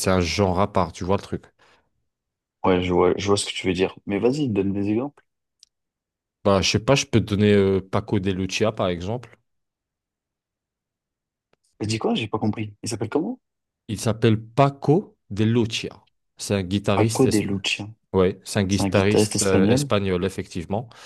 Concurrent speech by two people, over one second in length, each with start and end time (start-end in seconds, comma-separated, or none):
18.7-19.9